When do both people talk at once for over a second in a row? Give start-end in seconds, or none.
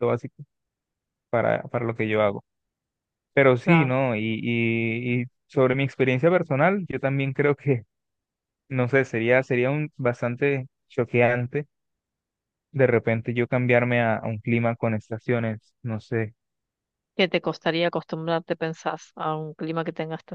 none